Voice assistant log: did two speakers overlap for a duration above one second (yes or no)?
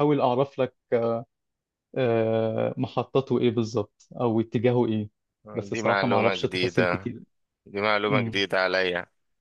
yes